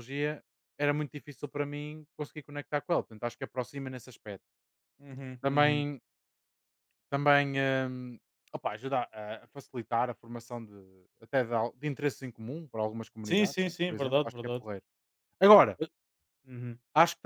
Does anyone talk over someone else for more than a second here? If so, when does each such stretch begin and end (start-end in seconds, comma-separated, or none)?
13.2-14.7